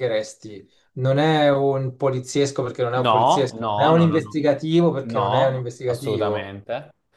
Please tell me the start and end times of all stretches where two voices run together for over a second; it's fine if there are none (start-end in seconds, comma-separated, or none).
3.0-4.4, 5.0-6.6